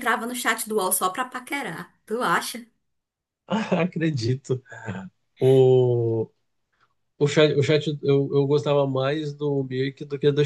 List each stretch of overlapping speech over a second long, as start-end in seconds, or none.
none